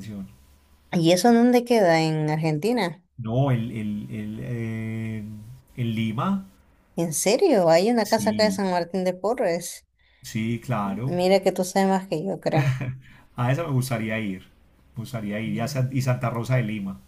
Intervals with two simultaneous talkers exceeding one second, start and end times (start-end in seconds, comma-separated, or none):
none